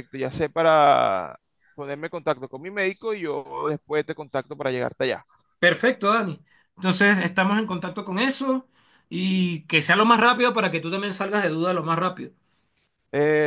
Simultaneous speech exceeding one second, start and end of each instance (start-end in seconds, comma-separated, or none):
none